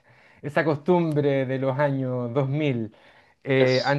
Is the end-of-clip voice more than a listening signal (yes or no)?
no